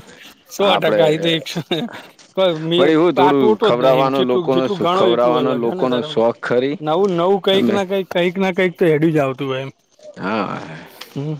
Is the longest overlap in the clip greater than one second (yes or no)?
yes